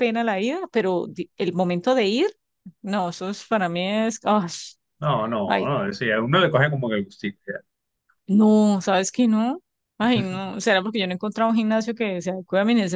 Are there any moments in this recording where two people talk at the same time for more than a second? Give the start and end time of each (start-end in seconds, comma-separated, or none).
none